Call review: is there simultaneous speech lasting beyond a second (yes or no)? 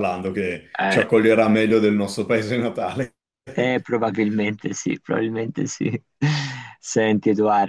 no